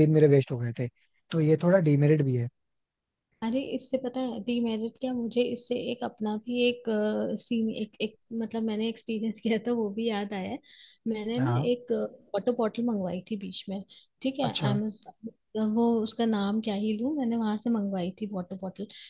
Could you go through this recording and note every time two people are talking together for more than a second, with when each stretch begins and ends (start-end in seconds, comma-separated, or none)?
none